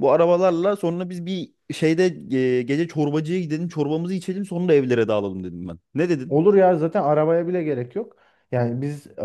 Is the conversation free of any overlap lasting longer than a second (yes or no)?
yes